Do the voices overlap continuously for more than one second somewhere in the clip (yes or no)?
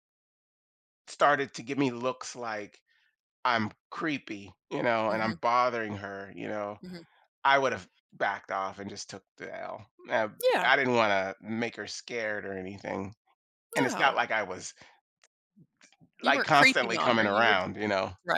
yes